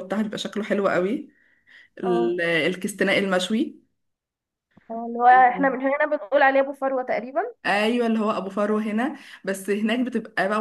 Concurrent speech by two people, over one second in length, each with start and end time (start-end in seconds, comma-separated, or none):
none